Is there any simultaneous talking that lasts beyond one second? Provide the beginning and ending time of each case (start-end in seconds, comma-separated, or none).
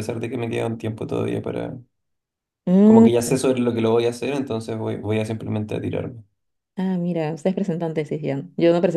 none